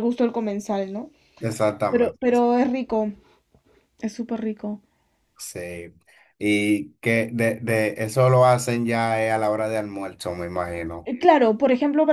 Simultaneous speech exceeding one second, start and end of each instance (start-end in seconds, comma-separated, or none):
none